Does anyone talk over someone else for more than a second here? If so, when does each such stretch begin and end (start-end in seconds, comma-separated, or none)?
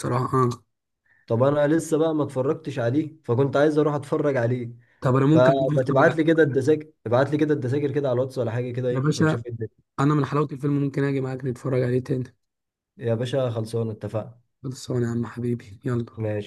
5.3-6.6